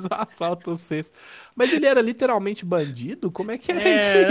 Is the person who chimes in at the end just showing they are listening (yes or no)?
no